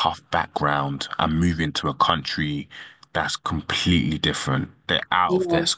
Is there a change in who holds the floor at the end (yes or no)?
no